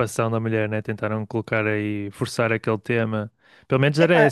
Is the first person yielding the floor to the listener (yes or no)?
no